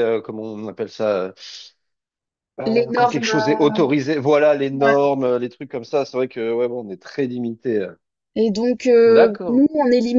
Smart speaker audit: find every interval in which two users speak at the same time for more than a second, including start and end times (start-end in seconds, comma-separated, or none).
2.6-4.0